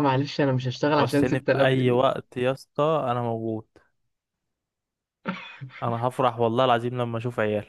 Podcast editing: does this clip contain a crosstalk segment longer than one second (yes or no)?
yes